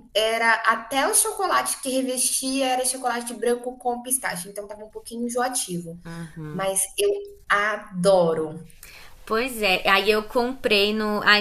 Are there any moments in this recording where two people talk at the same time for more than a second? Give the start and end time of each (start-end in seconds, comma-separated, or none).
none